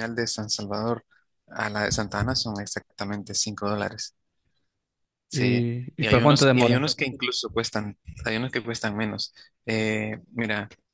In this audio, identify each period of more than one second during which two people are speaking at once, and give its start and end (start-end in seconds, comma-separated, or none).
5.3-6.8